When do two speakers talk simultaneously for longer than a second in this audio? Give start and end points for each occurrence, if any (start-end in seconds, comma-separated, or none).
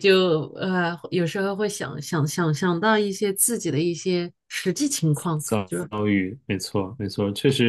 none